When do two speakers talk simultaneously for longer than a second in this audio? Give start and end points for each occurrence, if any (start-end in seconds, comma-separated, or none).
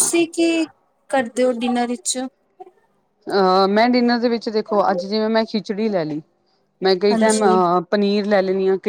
none